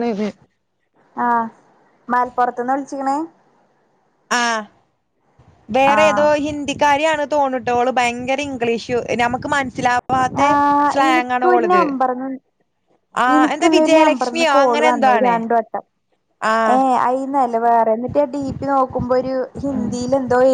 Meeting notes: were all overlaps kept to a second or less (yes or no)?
no